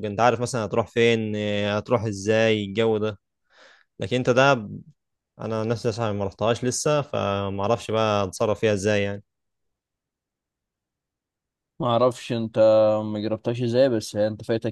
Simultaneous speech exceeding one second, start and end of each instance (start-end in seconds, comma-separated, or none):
none